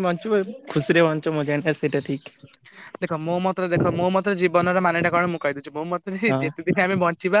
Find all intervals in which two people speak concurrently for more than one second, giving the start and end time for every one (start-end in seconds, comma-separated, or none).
none